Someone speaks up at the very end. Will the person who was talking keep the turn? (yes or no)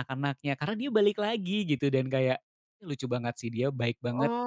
no